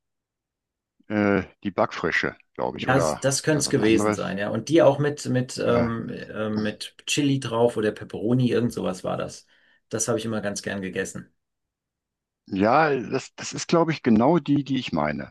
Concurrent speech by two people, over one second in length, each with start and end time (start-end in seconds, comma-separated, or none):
2.8-4.4